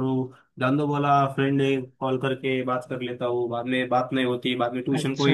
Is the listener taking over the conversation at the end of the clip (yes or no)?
yes